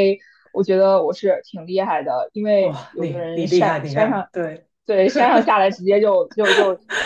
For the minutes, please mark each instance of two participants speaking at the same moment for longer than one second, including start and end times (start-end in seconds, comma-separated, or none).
2.6-4.3